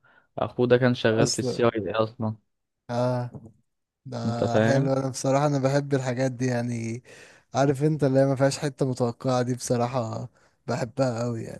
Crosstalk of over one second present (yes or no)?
no